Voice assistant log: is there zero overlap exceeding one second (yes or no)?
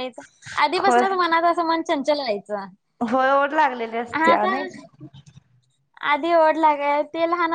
yes